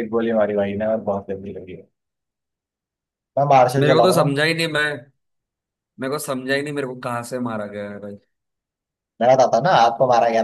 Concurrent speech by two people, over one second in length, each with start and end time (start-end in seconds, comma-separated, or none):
none